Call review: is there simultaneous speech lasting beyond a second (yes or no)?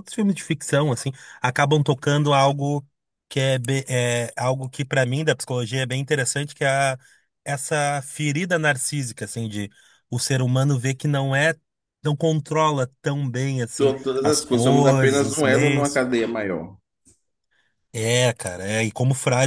yes